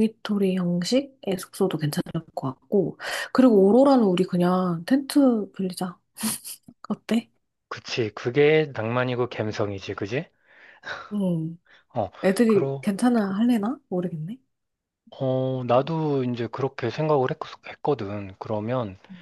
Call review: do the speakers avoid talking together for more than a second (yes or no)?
yes